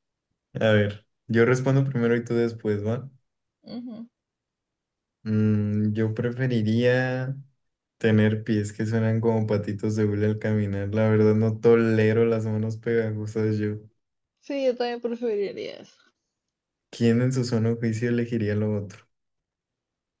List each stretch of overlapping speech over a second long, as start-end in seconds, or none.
none